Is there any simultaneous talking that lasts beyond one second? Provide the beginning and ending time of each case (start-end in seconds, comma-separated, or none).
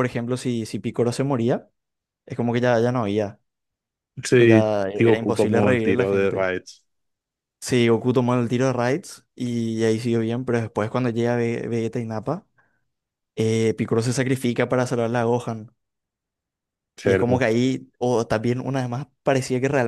4.3-6.5